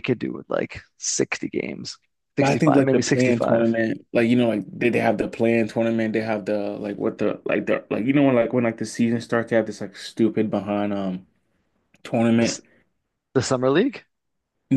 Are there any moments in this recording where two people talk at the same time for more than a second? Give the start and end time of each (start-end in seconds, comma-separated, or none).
2.4-3.7